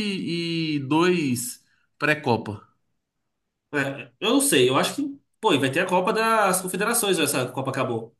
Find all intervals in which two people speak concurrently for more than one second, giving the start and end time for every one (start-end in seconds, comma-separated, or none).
none